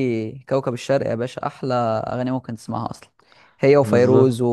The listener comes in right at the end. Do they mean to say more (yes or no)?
no